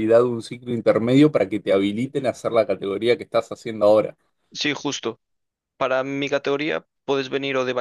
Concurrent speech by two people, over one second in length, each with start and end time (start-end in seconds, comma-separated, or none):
none